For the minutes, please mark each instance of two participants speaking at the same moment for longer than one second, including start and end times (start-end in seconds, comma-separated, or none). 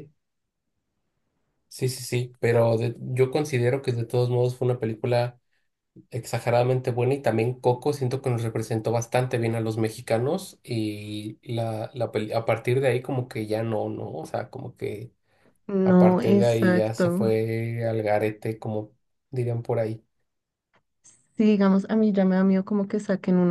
15.8-17.3